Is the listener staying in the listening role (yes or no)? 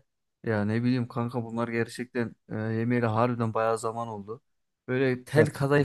yes